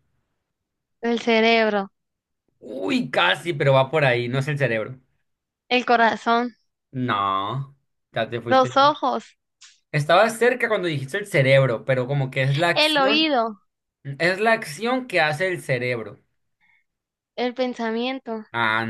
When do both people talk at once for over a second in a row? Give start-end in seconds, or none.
none